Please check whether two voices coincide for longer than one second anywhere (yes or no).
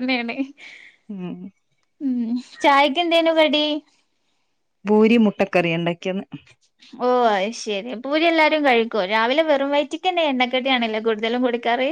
no